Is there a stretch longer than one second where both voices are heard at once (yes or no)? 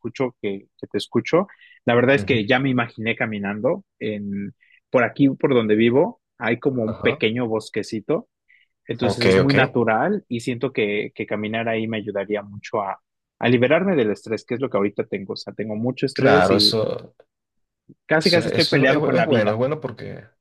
yes